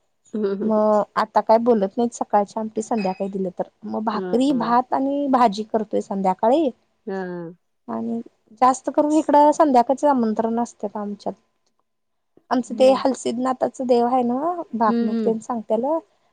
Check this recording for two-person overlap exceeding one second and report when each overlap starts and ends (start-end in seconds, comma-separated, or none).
none